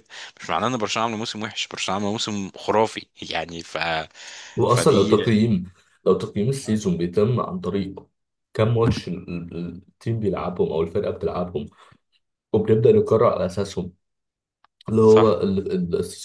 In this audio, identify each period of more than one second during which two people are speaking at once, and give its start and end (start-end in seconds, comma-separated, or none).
none